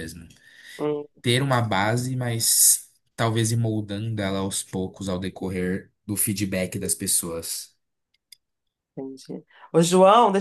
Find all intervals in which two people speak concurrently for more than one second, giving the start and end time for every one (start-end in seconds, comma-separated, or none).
none